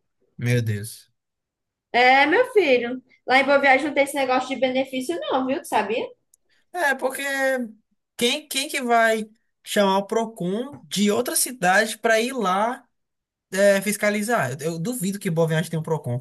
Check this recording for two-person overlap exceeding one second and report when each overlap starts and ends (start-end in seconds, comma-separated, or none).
none